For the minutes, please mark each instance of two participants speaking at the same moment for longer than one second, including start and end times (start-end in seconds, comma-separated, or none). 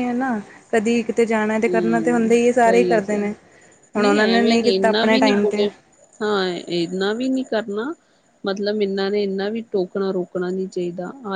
1.7-3.3, 4.0-5.5